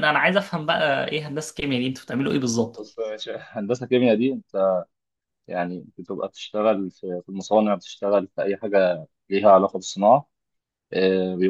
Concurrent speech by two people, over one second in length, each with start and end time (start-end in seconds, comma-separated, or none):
none